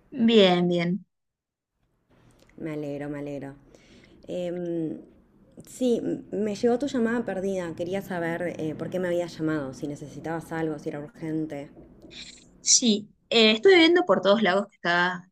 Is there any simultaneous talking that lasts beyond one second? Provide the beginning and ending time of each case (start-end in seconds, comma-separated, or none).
none